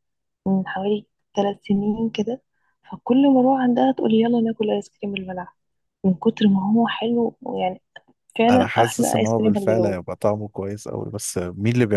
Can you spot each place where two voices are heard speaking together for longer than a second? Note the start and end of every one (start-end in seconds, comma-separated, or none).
8.5-10.0